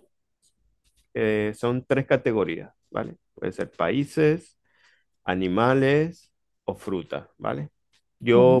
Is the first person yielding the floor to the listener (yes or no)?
no